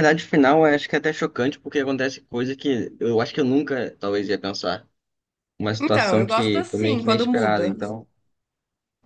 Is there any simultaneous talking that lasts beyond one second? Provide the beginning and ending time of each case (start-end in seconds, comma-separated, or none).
5.8-7.7